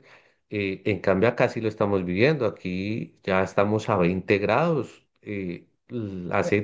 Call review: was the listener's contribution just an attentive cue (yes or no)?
yes